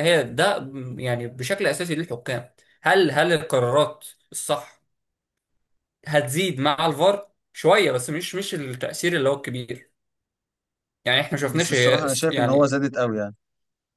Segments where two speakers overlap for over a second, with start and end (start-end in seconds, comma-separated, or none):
11.5-12.8